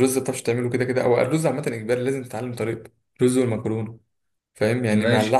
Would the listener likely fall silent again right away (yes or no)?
yes